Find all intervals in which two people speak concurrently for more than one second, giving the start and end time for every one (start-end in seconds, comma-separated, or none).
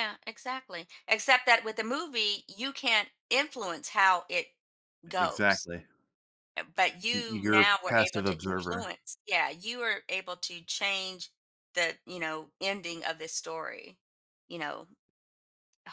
7.1-8.9